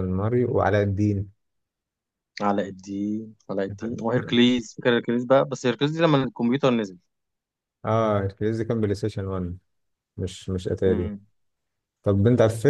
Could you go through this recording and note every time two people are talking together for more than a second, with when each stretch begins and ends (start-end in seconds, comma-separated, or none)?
none